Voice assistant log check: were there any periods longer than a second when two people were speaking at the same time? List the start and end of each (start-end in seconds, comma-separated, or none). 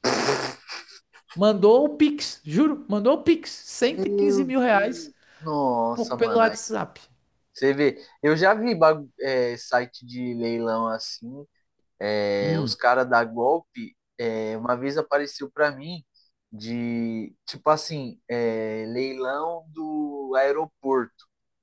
3.9-5.1